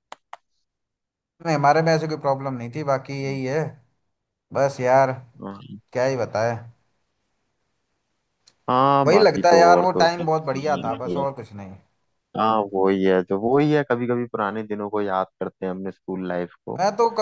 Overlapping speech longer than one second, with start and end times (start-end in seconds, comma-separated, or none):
9.1-11.2